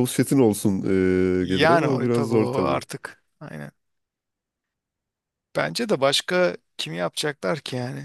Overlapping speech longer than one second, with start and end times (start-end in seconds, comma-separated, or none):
1.4-2.8